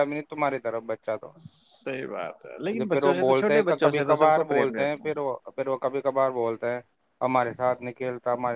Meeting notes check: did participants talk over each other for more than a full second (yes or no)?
yes